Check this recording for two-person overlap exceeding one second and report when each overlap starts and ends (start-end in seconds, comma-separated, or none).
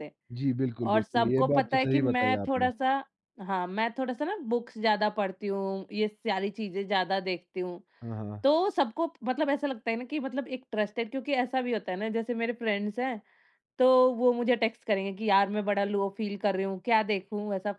0.9-2.7